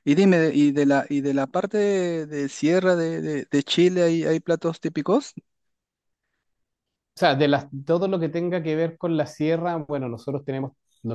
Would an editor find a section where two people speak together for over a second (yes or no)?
no